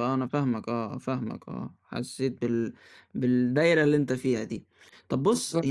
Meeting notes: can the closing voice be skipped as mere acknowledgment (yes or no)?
yes